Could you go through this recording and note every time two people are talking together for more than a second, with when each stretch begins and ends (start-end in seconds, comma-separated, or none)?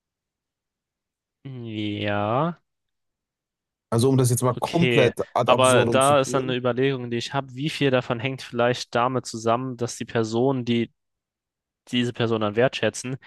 4.5-6.6